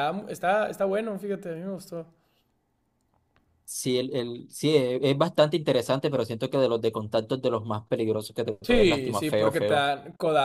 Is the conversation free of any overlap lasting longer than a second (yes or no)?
no